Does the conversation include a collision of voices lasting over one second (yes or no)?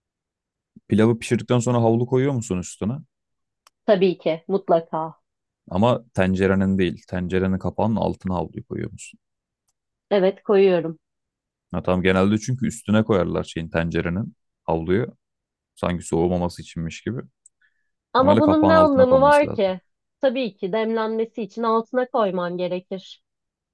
yes